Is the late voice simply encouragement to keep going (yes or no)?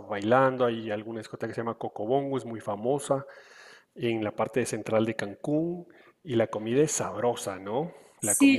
no